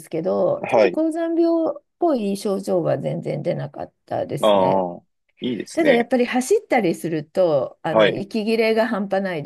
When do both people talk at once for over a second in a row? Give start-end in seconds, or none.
none